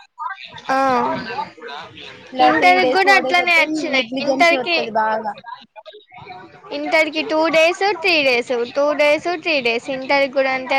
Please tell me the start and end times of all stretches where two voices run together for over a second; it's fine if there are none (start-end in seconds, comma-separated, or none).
2.5-4.8